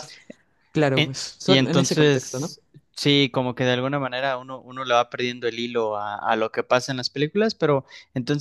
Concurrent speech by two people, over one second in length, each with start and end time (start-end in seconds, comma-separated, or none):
0.9-2.5